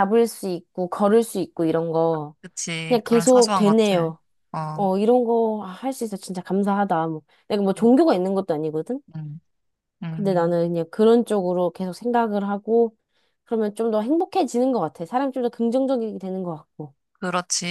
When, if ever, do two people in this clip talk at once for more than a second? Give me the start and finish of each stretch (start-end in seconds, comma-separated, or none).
2.9-4.1